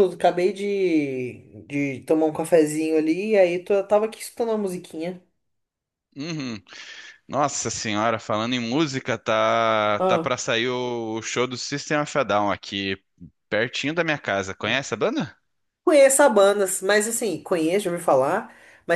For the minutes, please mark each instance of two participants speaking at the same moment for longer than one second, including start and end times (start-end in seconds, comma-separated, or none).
none